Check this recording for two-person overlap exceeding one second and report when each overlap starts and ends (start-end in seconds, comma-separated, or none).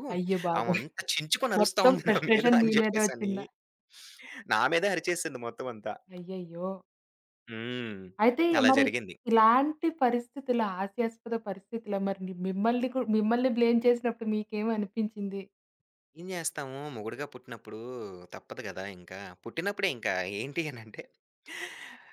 1.6-3.3